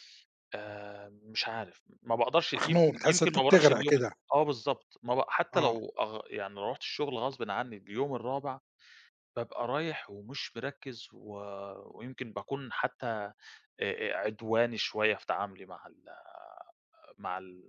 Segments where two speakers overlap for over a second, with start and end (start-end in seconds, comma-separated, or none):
2.6-4.1